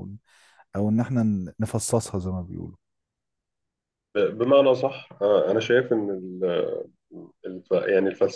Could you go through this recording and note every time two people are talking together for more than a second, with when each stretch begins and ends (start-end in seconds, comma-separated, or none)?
none